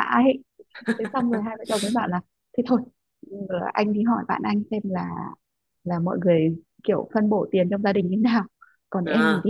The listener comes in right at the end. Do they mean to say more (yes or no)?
no